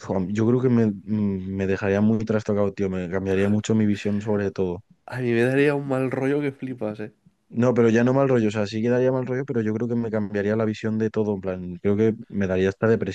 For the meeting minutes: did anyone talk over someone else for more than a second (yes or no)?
no